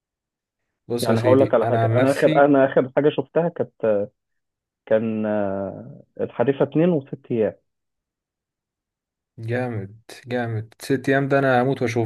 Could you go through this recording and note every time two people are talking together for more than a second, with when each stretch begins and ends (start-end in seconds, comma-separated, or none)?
1.0-2.4